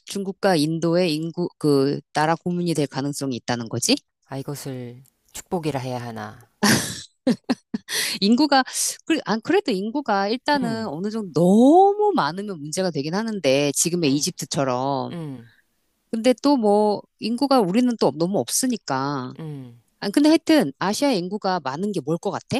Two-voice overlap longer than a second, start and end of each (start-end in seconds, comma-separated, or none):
none